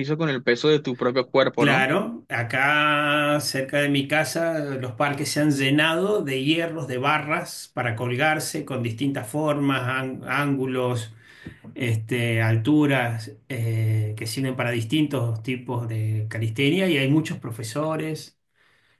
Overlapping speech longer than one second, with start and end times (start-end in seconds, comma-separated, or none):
none